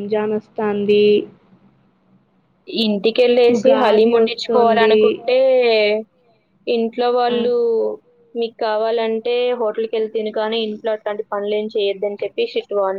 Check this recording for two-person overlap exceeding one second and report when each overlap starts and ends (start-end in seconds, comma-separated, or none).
3.5-5.0